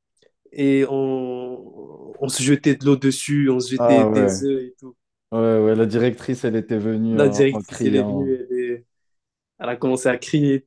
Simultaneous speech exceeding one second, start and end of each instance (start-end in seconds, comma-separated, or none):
7.1-8.3